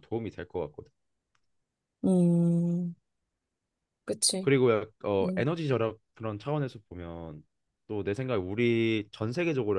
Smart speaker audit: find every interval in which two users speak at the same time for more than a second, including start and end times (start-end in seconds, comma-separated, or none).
none